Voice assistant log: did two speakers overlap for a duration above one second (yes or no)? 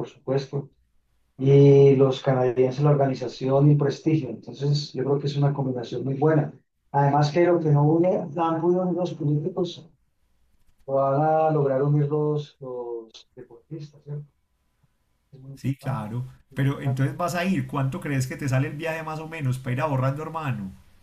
yes